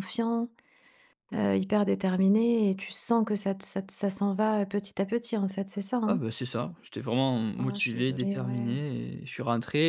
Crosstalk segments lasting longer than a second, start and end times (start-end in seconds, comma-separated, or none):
7.5-8.8